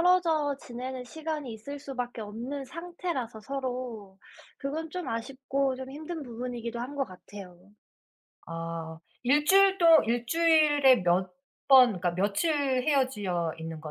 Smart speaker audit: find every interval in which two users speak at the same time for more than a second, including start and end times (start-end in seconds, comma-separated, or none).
none